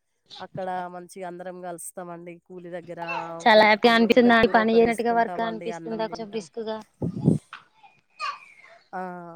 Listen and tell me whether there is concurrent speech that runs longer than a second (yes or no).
yes